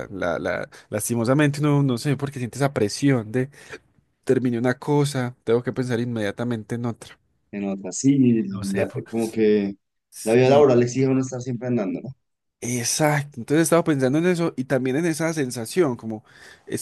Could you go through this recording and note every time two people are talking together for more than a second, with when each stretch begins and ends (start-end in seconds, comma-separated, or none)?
none